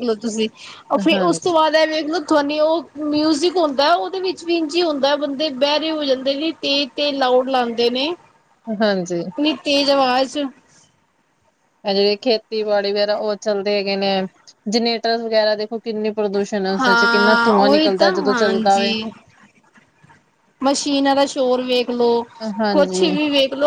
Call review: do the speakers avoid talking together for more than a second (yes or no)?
no